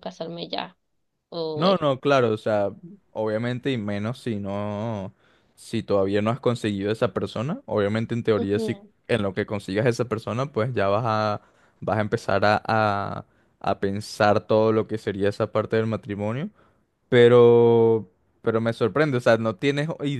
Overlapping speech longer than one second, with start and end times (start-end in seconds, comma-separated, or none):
none